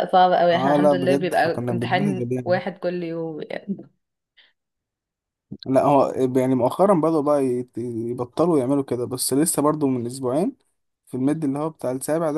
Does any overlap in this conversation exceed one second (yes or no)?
yes